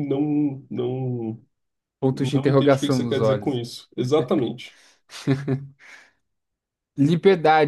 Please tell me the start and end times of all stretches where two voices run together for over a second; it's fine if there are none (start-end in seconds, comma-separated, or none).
2.1-3.6